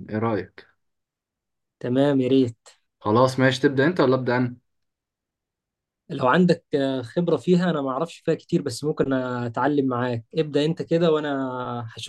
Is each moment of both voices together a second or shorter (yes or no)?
yes